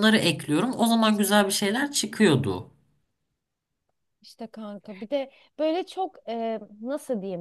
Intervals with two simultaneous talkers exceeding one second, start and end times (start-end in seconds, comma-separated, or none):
none